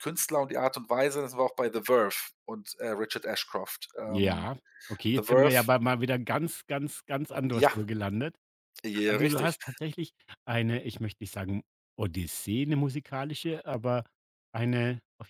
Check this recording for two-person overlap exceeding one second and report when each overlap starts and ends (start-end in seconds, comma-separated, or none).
none